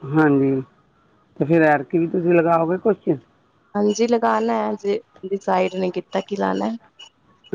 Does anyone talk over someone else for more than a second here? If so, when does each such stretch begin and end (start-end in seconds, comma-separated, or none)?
none